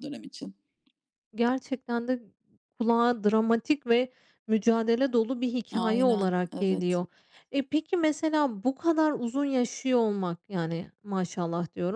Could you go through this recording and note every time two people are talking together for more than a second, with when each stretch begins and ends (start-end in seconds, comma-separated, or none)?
5.7-7.0